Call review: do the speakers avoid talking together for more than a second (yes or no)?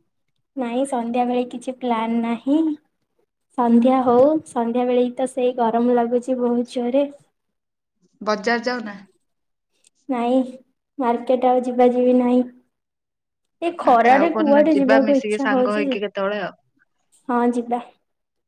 no